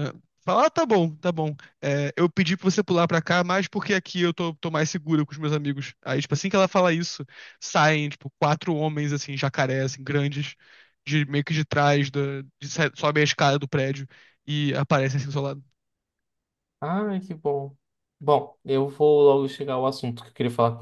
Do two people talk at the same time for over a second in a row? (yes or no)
no